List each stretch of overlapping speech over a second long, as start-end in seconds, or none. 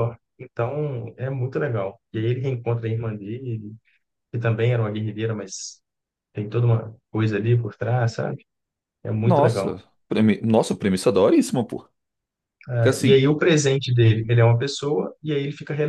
none